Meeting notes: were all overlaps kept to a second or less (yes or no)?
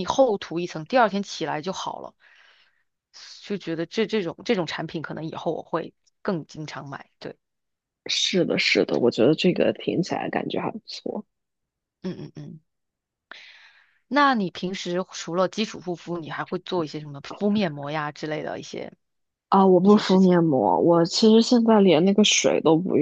yes